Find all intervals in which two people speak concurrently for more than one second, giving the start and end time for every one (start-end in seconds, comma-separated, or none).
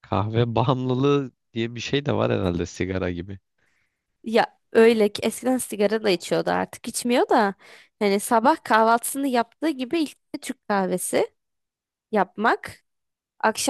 none